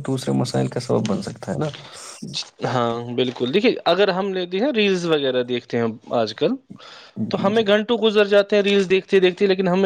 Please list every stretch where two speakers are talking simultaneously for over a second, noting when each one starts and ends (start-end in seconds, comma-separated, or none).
none